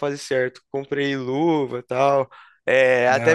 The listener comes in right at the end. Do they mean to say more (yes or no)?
no